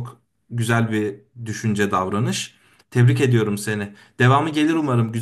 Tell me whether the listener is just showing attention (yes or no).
yes